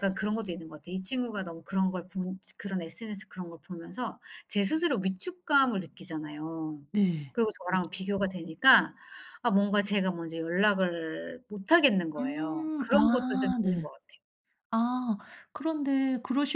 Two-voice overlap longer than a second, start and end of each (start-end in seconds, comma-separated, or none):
12.2-13.9